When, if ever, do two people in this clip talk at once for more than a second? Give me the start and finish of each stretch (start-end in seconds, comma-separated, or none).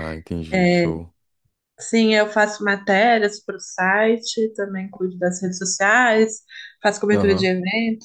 none